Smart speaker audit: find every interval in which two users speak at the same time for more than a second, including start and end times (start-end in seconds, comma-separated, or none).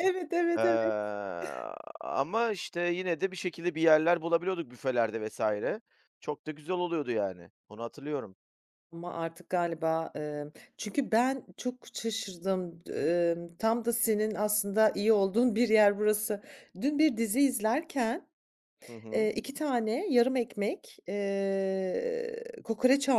none